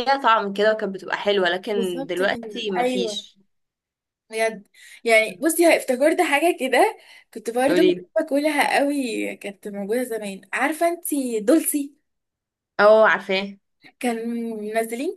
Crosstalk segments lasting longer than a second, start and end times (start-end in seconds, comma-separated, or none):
1.7-3.2